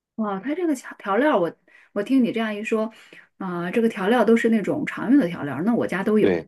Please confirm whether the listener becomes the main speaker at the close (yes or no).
yes